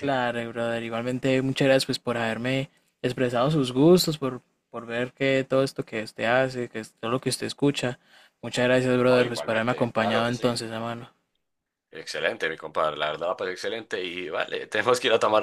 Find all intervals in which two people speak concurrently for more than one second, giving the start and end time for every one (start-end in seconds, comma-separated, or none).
9.1-10.6